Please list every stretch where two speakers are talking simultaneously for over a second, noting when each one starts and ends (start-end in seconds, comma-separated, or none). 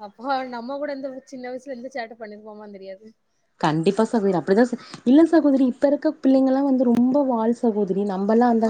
none